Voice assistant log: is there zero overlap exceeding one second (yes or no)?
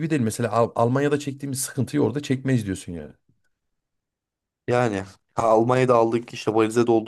yes